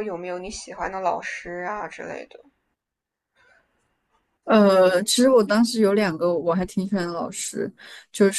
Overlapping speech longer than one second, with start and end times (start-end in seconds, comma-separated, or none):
none